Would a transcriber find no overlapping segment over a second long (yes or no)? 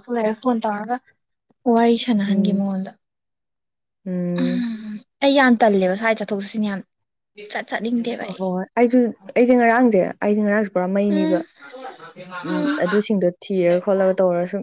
yes